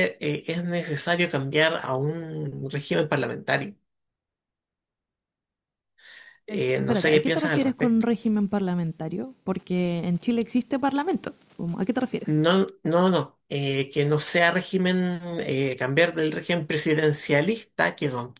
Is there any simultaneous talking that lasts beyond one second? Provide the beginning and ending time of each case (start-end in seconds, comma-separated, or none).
6.5-8.1